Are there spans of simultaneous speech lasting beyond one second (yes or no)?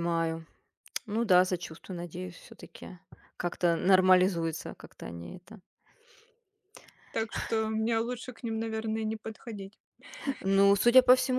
no